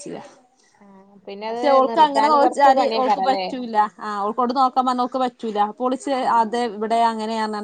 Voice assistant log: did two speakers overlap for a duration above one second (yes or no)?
yes